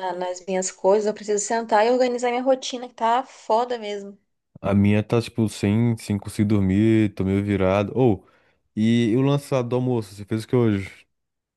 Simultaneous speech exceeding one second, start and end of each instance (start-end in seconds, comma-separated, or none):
none